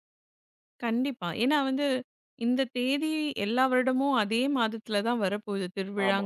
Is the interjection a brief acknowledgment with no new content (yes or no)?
yes